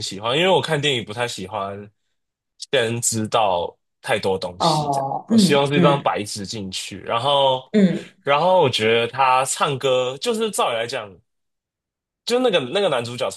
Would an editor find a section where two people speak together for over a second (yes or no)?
yes